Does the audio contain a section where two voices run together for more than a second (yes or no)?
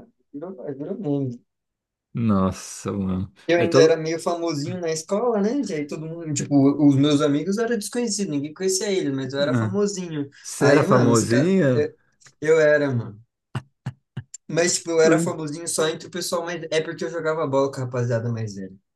yes